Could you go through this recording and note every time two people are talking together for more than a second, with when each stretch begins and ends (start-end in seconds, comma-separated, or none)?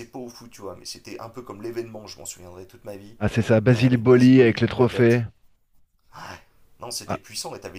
3.7-5.2